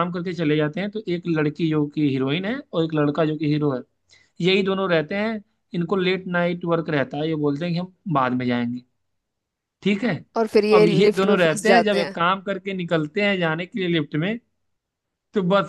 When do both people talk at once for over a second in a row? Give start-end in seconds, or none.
10.7-12.2